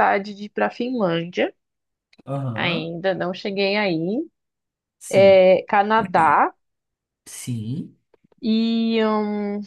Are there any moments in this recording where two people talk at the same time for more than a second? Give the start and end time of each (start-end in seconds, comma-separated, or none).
none